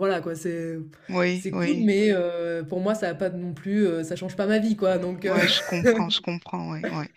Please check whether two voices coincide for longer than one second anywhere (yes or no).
no